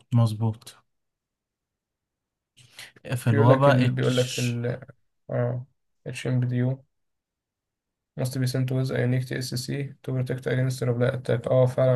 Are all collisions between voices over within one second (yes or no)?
no